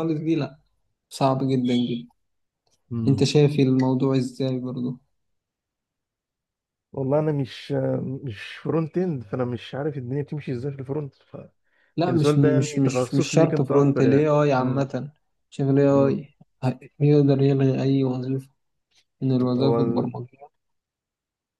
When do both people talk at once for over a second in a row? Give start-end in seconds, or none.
12.0-14.8